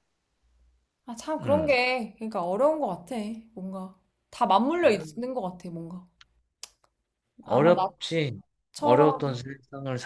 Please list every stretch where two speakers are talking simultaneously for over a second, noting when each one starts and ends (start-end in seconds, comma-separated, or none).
none